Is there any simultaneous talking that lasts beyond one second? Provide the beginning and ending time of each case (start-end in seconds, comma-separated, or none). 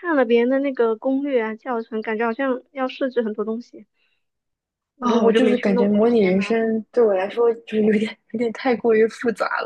5.0-6.8